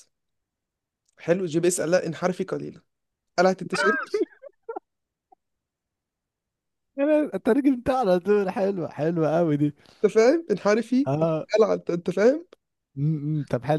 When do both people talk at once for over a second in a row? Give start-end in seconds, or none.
none